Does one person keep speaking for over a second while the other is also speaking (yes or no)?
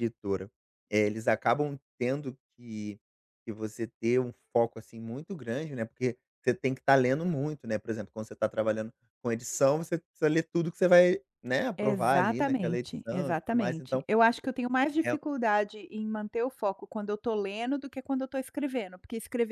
yes